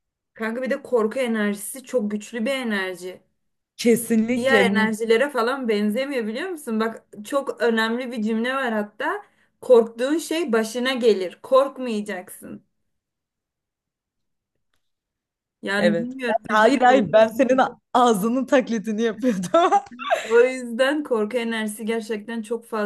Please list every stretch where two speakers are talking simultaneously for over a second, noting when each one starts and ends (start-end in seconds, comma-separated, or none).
15.8-17.3